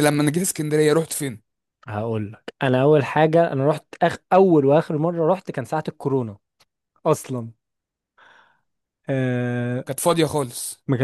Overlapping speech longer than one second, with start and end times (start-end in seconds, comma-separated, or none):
none